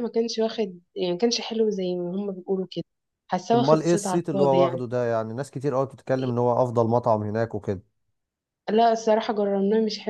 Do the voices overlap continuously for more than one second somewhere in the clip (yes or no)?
yes